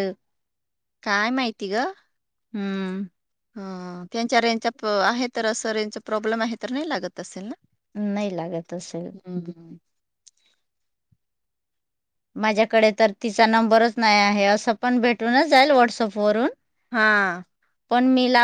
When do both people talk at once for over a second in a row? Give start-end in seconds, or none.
none